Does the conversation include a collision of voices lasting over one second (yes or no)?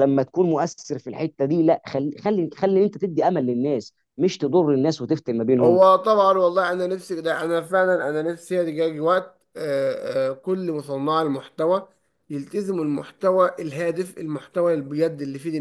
no